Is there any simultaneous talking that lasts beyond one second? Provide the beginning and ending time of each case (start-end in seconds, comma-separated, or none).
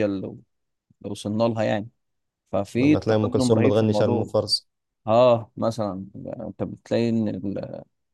2.8-4.3